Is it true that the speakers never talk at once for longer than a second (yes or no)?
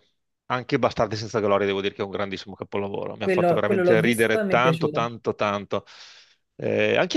no